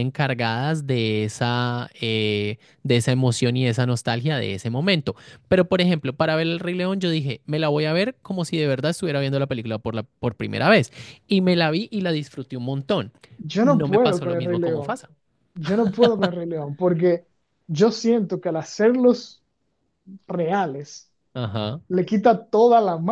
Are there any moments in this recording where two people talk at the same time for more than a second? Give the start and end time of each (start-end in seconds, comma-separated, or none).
13.6-15.0